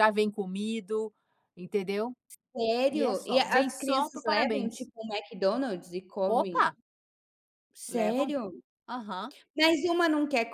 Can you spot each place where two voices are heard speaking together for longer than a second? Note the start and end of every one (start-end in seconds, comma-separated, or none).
2.9-4.9